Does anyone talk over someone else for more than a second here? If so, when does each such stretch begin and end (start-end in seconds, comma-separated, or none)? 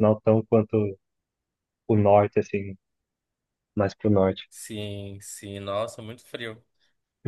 none